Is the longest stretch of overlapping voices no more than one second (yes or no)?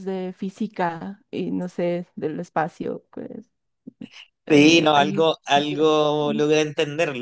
no